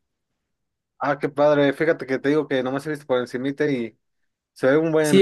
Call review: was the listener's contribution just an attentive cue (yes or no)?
no